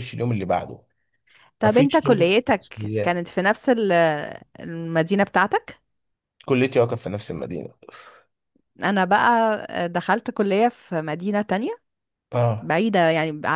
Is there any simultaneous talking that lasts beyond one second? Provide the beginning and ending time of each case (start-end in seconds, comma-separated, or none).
1.6-3.2